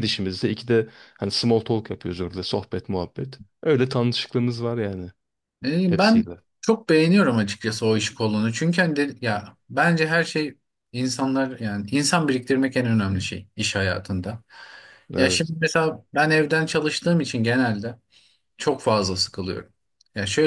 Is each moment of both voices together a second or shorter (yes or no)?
yes